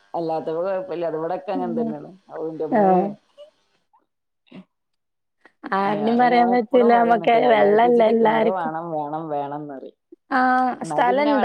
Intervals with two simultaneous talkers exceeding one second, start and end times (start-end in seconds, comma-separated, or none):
5.9-8.7